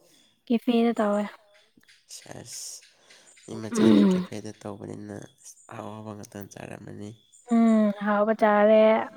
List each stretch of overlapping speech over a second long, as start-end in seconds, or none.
none